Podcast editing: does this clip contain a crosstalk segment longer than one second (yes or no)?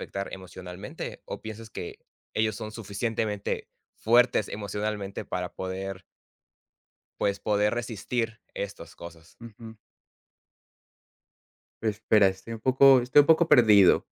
no